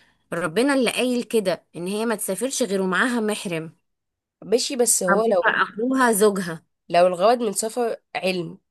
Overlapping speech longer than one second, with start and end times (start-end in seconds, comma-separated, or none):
none